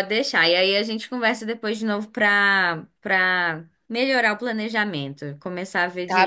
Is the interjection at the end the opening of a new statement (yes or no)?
yes